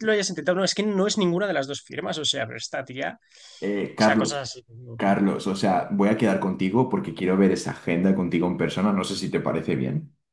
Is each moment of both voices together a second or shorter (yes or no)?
yes